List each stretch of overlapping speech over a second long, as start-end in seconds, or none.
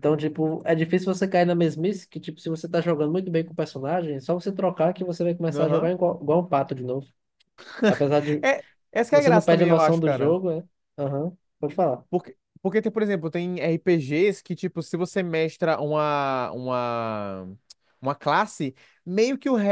9.1-10.4